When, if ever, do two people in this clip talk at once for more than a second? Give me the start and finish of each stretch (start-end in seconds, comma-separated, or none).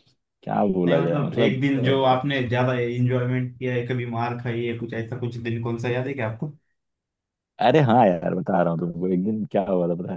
0.8-2.2